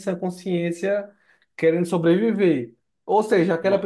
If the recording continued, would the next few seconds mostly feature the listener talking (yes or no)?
no